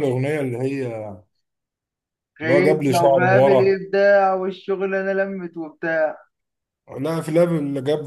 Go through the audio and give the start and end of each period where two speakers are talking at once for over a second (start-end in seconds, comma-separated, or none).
2.4-3.8